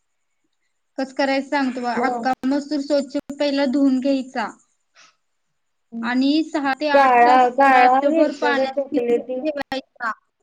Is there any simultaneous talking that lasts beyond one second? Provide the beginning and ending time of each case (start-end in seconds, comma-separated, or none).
6.9-9.4